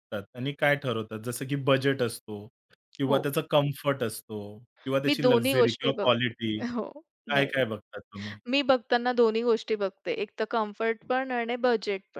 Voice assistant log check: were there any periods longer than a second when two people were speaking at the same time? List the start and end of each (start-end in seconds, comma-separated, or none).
5.1-6.3